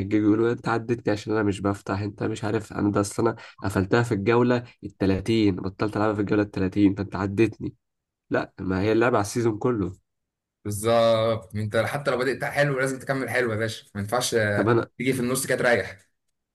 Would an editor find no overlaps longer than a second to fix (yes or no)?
yes